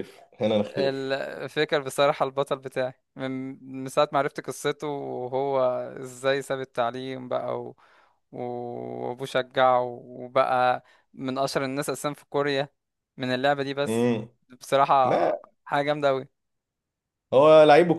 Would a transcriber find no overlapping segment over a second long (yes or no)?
yes